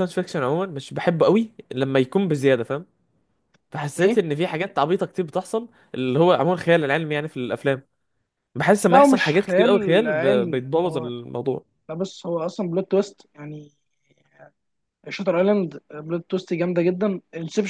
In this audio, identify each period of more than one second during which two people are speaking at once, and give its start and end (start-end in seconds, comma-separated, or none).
8.8-11.1